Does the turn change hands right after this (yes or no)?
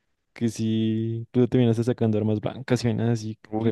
yes